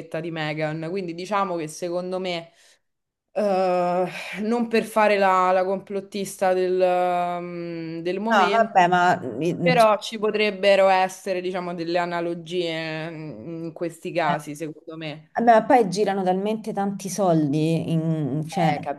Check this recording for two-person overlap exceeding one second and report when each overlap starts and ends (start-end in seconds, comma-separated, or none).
none